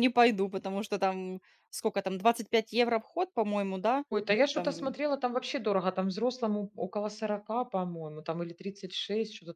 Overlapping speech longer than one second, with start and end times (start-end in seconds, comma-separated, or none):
none